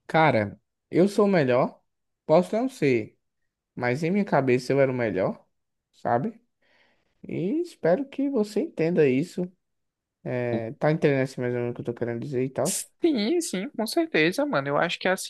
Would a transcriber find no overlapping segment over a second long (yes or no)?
yes